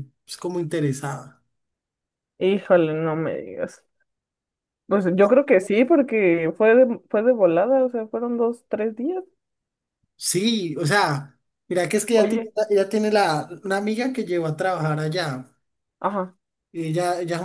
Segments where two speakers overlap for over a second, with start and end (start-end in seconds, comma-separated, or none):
none